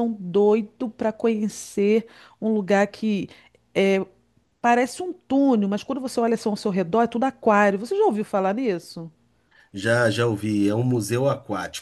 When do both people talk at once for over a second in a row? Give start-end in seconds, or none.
none